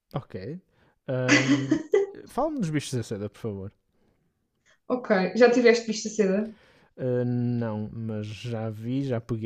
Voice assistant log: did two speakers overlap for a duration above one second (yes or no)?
no